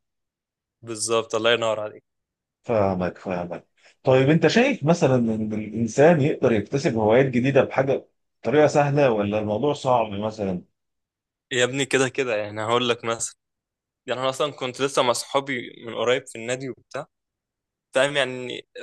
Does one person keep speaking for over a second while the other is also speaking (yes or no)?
no